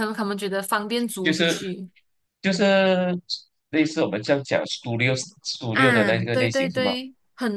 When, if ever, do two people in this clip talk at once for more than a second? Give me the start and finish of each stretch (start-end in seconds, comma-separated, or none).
5.7-6.9